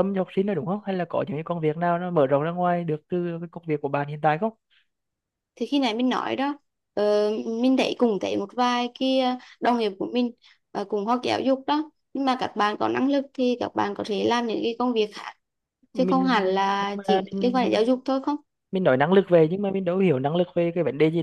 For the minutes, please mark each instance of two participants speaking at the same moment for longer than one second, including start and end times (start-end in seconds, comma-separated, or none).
15.9-17.8